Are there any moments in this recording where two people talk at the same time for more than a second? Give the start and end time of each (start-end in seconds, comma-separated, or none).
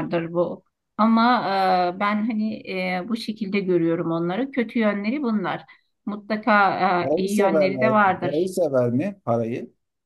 7.0-8.5